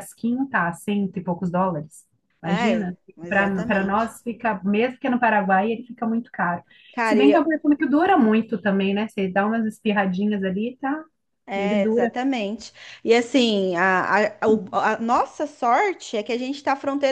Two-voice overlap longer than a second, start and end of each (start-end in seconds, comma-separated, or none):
2.4-4.2